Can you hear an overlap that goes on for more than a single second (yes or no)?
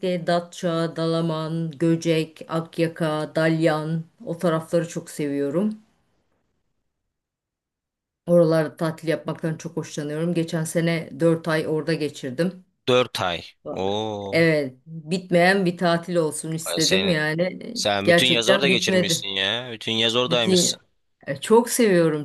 yes